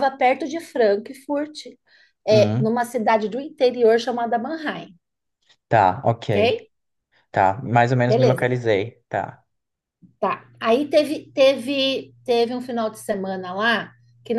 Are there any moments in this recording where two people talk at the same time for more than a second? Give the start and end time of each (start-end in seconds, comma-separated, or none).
none